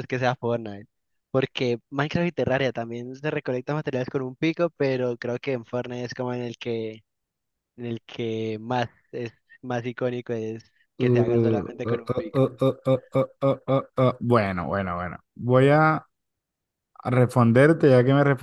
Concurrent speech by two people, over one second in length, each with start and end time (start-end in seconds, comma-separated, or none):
11.0-12.5